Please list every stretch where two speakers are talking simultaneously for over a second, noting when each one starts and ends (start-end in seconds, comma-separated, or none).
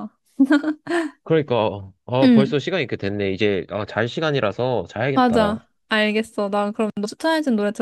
none